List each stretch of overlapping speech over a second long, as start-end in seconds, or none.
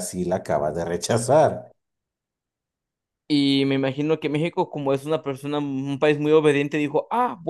none